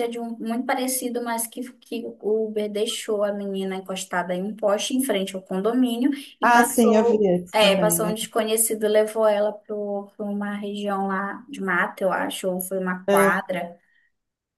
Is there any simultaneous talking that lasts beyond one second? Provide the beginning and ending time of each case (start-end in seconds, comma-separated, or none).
6.4-8.2